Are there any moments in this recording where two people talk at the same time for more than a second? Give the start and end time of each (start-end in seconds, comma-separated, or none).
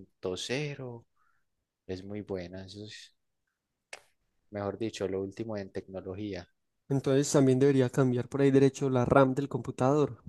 none